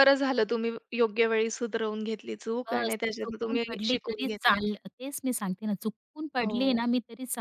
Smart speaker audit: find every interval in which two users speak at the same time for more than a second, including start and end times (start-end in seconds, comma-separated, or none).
2.7-4.6